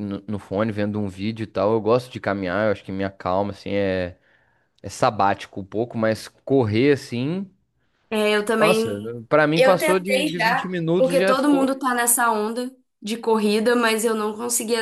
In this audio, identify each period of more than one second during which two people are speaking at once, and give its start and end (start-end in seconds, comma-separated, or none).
9.6-11.8